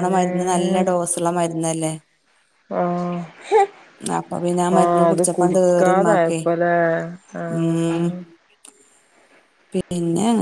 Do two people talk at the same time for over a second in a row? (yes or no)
yes